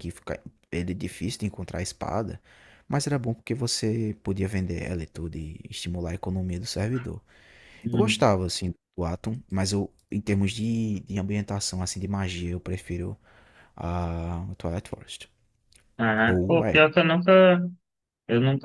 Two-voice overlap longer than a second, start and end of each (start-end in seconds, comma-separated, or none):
none